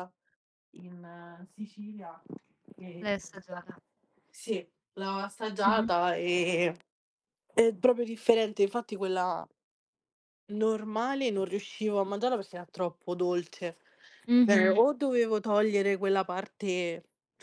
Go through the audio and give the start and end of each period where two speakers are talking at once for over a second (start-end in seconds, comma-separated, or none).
none